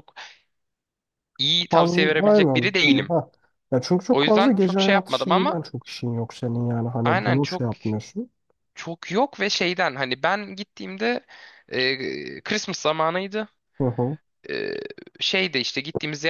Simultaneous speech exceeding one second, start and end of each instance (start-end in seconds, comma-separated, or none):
1.7-3.1, 4.1-5.6